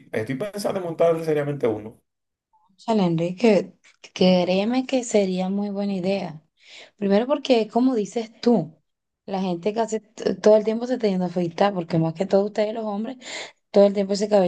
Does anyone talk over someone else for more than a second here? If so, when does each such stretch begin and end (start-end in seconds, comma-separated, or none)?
none